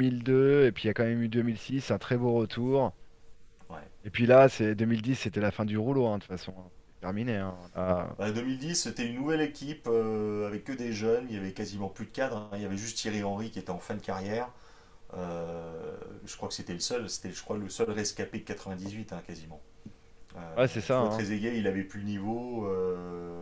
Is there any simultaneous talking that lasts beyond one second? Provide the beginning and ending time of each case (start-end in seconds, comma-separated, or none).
none